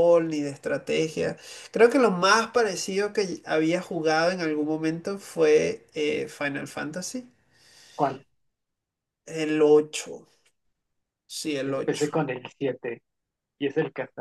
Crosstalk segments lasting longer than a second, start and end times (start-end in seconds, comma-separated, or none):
none